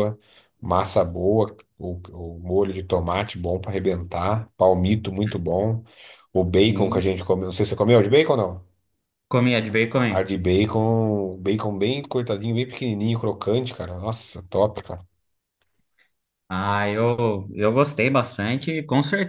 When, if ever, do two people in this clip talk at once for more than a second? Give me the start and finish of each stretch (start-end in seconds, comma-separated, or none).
none